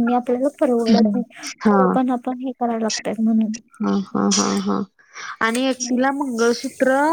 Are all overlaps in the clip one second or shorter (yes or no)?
yes